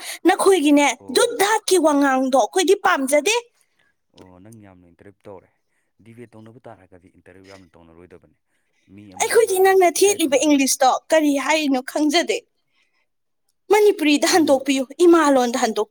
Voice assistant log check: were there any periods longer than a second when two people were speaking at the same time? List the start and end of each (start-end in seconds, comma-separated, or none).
9.2-10.8